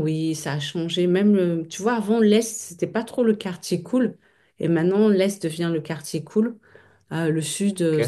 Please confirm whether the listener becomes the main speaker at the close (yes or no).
no